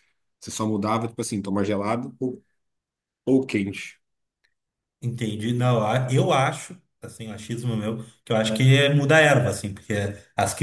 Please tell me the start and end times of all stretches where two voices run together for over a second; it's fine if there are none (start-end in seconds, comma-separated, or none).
none